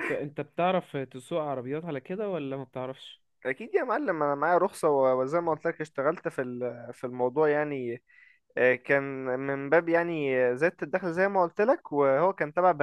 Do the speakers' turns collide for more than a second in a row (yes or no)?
no